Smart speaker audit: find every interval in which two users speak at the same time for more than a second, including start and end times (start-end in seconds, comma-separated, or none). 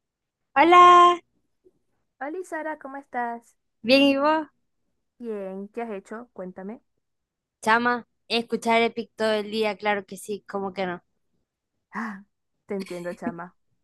none